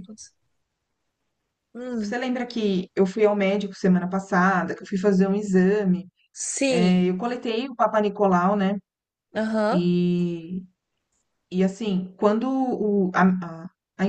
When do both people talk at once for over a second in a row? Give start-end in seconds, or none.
none